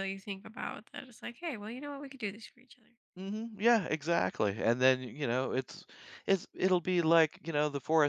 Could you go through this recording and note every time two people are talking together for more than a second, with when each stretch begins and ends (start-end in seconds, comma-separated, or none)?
none